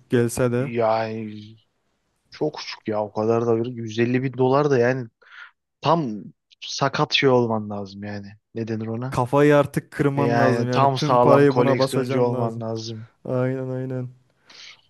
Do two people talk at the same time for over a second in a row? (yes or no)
yes